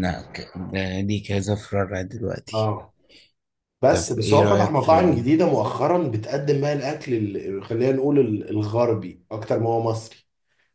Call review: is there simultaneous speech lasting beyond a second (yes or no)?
yes